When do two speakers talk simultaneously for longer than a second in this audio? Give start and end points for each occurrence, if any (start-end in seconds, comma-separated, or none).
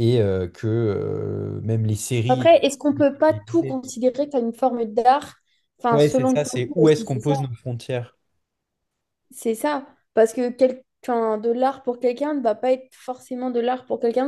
5.9-7.3